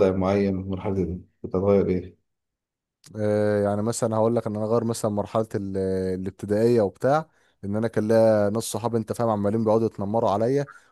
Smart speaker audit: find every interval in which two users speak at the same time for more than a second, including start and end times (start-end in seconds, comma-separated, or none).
none